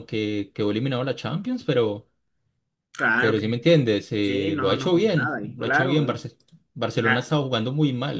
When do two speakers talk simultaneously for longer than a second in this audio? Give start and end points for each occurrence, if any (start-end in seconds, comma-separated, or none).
4.2-6.2